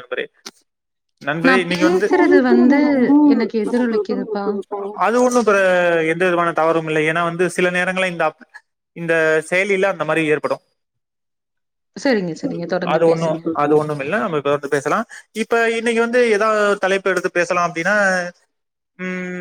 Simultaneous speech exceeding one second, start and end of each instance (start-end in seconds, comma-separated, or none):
none